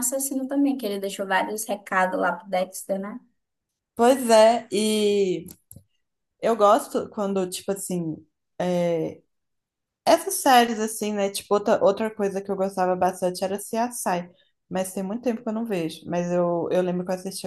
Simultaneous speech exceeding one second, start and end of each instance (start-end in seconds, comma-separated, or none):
none